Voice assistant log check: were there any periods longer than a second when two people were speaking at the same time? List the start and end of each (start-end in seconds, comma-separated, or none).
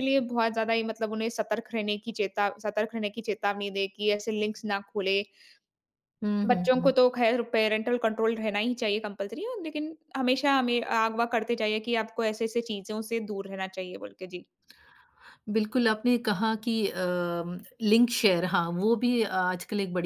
none